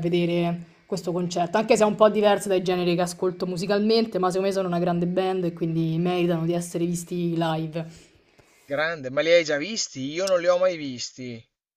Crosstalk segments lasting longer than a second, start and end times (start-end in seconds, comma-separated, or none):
none